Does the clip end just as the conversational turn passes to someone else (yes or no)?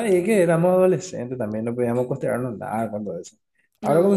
no